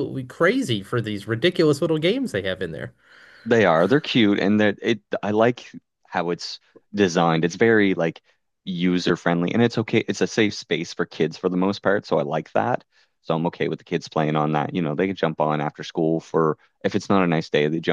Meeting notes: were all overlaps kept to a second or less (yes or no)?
yes